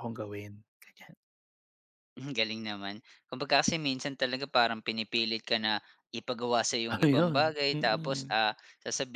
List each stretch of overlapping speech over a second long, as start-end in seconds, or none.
6.9-8.4